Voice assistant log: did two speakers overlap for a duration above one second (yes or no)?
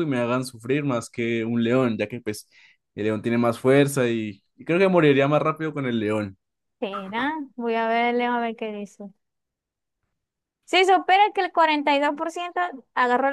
no